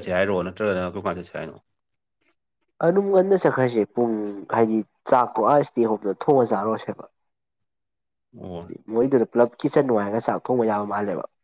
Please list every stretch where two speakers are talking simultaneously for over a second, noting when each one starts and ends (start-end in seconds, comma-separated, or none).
none